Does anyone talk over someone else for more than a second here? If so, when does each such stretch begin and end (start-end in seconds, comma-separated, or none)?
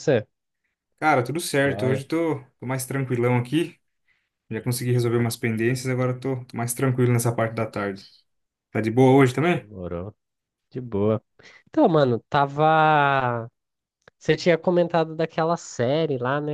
none